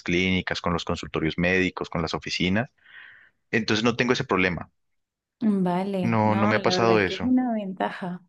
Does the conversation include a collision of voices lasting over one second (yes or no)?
yes